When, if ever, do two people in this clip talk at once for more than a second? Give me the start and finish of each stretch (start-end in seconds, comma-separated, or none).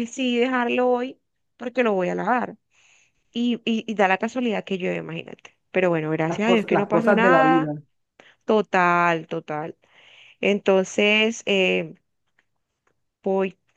6.2-7.7